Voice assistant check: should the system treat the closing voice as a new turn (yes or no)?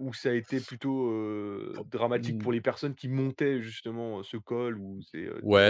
yes